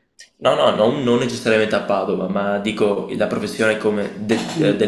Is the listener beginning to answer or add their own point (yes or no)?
no